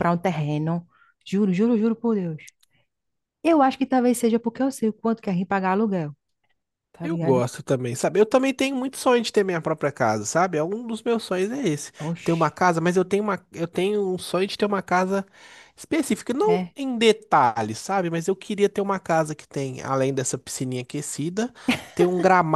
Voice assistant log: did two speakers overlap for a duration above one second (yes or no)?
no